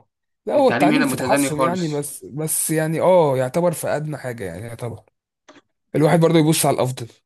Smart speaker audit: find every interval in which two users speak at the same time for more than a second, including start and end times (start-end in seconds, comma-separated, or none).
0.5-2.1